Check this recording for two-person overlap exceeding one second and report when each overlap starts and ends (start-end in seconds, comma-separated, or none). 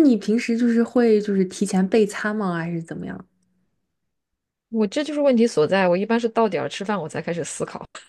none